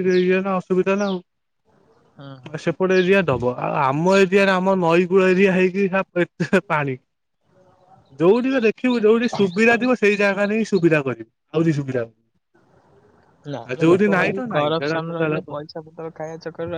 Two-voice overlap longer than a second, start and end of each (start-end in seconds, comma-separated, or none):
13.6-15.6